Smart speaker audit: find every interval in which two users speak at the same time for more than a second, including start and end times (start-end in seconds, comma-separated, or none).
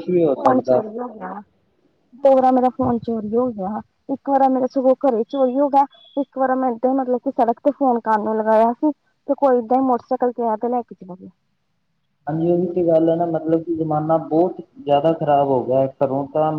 none